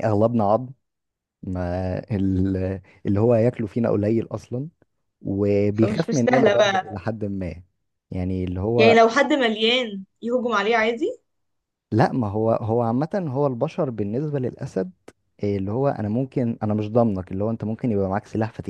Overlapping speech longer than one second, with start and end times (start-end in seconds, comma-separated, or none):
5.7-7.0